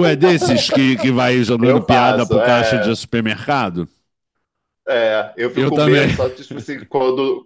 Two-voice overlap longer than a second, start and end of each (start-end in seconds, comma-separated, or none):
1.6-3.0